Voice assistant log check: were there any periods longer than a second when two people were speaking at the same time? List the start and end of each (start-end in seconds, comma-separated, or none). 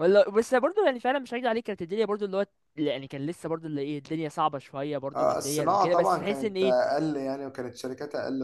5.2-6.8